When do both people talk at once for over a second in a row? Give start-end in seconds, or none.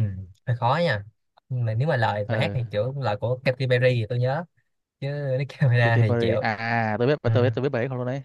none